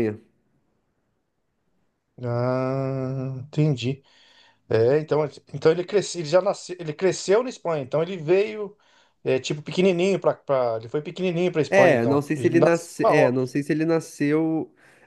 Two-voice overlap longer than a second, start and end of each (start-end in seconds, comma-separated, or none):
11.7-13.5